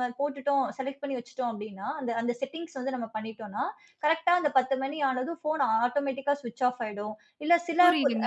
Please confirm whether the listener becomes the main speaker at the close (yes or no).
no